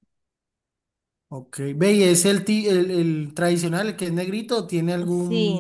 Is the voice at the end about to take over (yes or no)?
yes